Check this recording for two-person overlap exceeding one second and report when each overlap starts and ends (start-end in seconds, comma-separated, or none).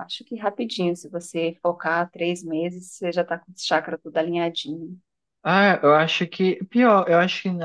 none